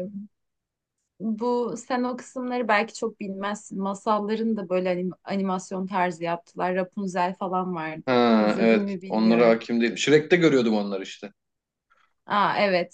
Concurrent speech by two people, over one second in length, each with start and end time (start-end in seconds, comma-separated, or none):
8.1-9.6